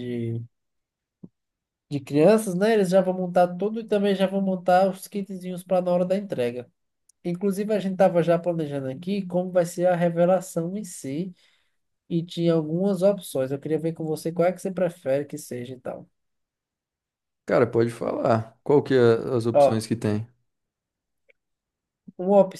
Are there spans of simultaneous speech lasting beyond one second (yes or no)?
no